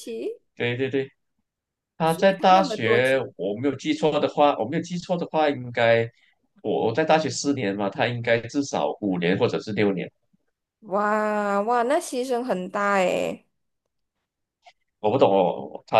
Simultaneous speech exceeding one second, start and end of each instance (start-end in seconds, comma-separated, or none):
2.0-3.2